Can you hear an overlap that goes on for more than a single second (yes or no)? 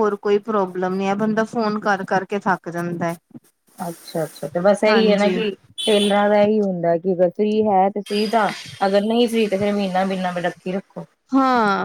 no